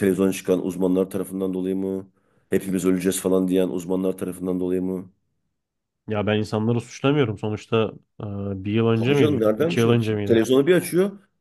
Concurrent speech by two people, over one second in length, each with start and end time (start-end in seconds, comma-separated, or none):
8.9-10.4